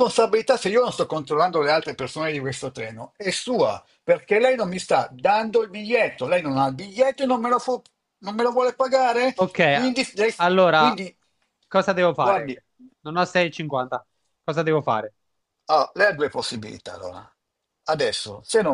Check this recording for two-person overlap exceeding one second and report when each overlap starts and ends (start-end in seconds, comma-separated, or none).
none